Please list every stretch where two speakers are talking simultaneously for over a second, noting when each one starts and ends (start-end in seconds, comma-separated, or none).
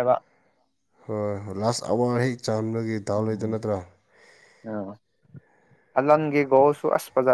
none